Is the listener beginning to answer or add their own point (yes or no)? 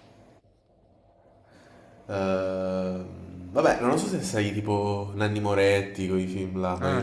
yes